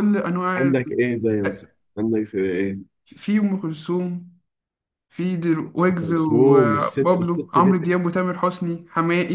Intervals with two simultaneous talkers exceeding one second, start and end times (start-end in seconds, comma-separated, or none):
5.9-7.8